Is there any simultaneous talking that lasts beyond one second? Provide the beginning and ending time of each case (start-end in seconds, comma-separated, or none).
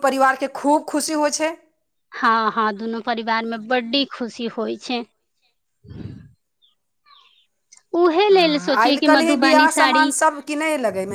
8.3-10.0